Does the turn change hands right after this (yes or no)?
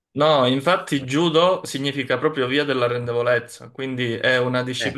no